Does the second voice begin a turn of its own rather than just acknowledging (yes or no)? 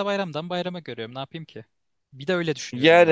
yes